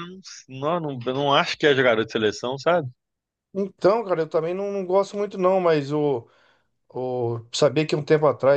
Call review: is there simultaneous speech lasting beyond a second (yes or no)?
no